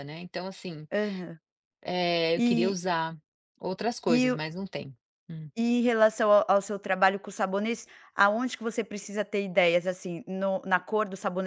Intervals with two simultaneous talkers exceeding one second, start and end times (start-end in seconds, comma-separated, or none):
none